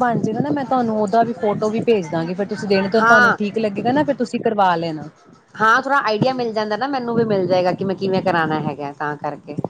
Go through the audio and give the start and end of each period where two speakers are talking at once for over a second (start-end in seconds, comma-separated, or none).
none